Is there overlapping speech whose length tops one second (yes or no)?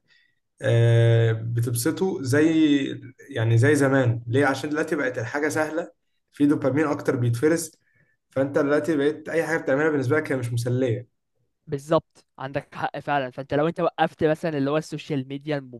no